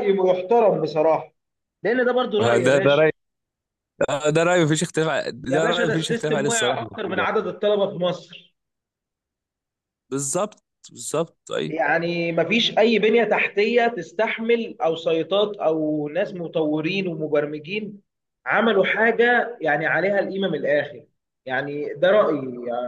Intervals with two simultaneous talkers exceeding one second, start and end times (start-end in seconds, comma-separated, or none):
5.5-7.3